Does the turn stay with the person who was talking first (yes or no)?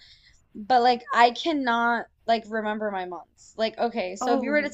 yes